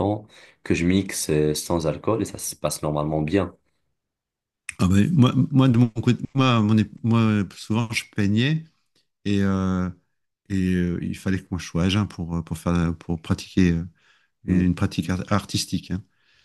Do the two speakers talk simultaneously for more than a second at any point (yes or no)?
no